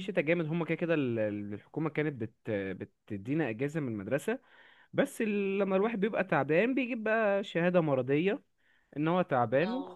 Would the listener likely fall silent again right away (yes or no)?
yes